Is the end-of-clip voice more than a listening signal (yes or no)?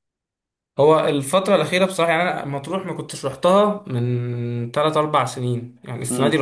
no